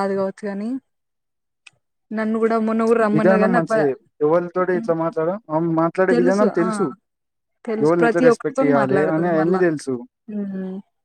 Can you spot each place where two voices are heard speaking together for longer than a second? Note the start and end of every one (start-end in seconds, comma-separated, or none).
7.8-9.6